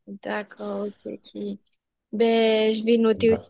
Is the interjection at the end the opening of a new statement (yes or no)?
no